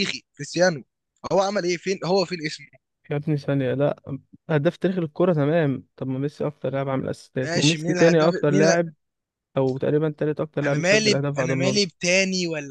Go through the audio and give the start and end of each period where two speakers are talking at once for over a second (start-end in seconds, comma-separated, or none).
7.4-8.8, 10.6-11.9